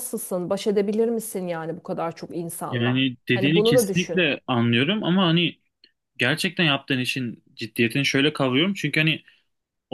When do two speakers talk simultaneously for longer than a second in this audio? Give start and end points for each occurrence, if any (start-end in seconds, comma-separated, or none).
2.7-4.3